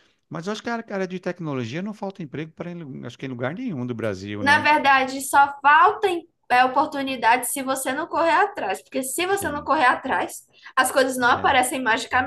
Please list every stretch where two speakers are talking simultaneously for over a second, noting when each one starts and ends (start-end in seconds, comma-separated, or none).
none